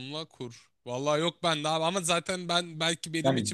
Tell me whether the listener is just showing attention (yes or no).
yes